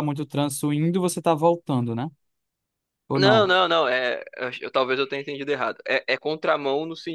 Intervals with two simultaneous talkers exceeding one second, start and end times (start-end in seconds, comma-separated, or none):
none